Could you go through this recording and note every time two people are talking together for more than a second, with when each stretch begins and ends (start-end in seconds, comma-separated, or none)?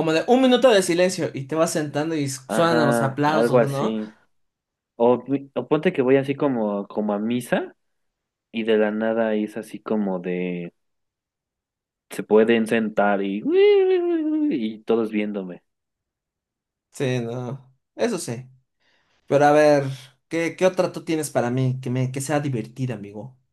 2.5-4.0